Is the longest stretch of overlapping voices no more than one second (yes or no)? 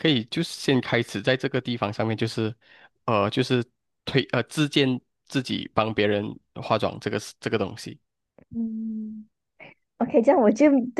yes